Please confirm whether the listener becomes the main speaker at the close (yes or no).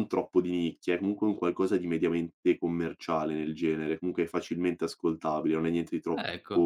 no